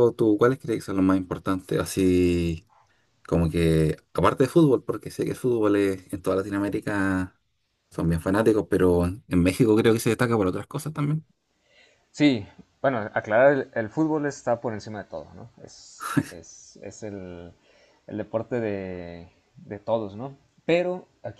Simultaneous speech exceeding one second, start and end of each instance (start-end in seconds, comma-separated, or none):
none